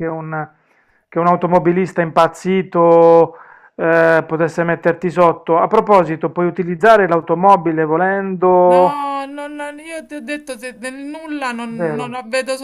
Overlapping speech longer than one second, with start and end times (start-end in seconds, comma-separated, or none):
none